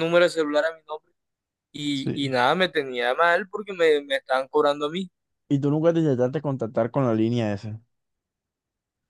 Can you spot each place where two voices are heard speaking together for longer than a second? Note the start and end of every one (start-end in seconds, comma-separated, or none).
none